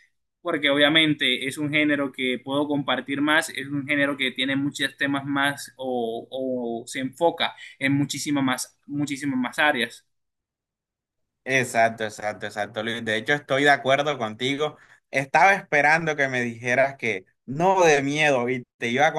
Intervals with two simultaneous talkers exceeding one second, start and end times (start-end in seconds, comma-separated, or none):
none